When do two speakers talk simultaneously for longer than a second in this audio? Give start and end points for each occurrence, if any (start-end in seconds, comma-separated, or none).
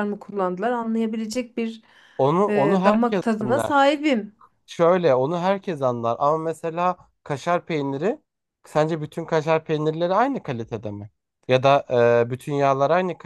2.5-3.7